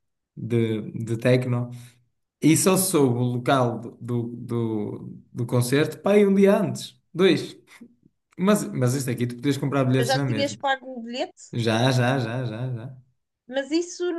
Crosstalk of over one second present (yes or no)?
no